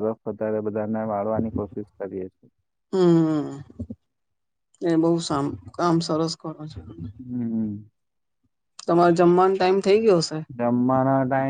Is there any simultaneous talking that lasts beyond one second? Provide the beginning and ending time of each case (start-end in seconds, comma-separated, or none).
none